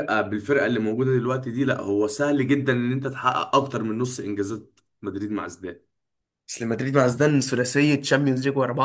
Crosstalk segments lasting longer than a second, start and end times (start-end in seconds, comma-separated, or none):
none